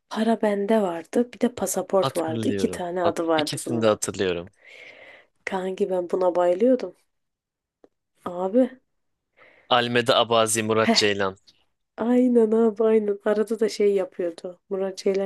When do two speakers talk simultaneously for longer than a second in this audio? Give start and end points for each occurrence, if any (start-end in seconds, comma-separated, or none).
1.9-3.9